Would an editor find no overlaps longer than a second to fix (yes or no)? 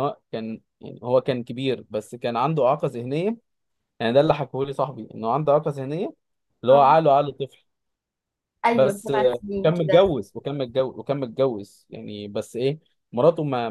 no